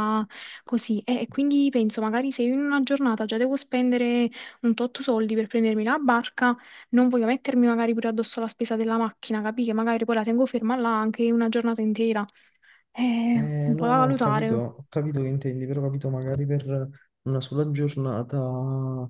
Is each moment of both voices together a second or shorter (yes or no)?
no